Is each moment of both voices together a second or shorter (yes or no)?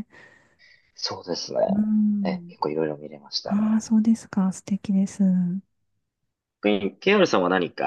yes